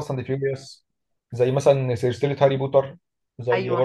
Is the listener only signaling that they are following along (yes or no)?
yes